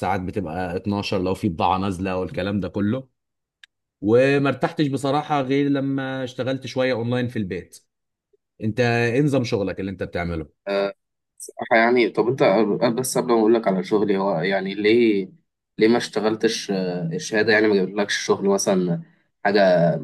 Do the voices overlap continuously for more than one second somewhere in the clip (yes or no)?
no